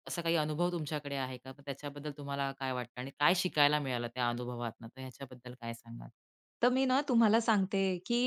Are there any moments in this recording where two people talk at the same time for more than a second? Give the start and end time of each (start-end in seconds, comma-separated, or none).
none